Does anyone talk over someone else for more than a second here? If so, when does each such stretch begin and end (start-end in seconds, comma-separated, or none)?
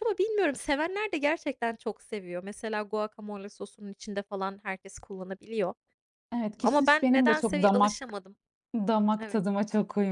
6.6-8.0